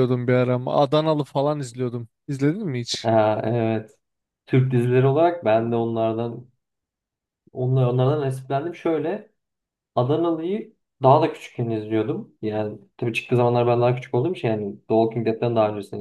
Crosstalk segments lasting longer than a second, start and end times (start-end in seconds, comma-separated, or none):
none